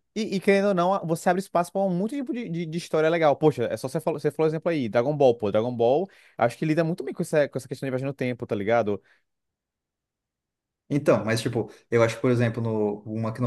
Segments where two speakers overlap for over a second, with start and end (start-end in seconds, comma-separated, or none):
none